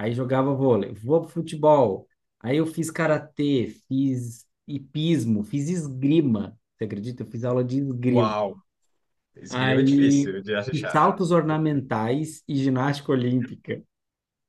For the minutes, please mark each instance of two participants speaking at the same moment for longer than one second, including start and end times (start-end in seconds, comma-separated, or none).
9.5-11.0